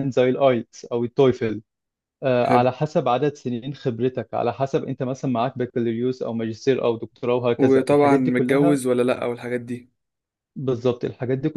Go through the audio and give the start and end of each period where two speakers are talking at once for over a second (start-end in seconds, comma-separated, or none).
7.6-8.8